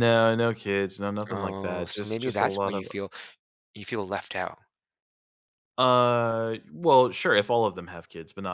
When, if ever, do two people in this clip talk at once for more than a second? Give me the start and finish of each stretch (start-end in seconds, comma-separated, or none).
1.3-2.9